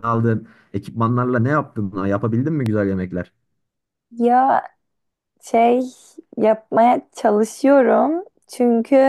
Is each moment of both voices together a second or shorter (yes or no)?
yes